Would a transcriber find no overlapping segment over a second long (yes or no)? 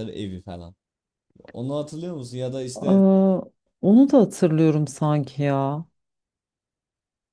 yes